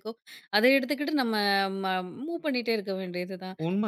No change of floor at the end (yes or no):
no